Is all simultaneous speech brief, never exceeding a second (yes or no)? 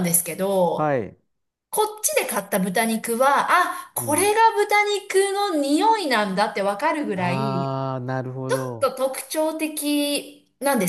yes